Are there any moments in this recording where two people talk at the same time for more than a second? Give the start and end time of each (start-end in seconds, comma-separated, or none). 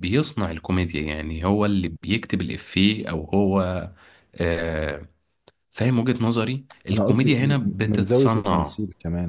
6.9-8.8